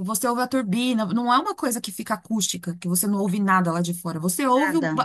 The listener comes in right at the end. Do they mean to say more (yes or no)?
yes